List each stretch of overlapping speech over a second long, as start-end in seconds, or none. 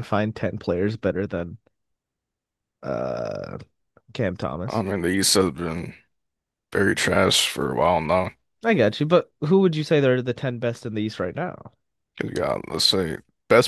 none